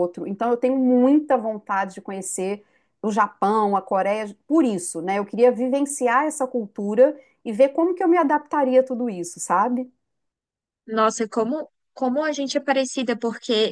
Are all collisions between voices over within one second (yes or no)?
yes